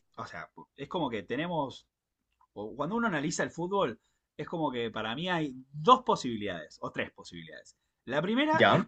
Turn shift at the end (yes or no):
no